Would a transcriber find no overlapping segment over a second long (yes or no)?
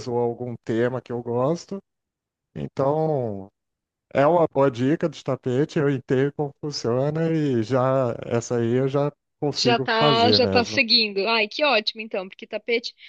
no